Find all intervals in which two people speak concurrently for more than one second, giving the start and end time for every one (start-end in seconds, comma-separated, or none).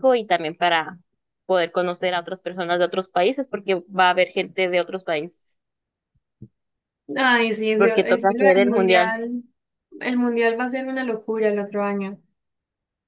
7.8-9.2